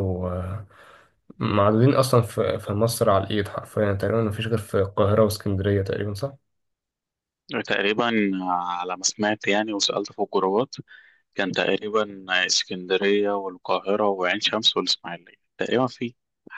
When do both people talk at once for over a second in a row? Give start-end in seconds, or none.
none